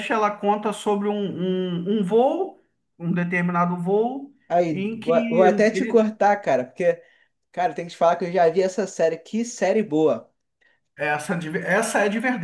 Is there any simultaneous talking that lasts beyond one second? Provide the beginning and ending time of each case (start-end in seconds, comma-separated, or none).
4.7-6.1